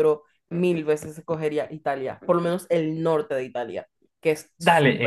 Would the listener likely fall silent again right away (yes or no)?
no